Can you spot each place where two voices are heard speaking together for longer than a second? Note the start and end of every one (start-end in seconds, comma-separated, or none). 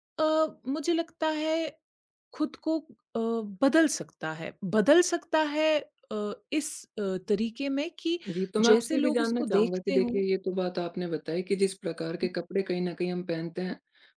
8.7-10.2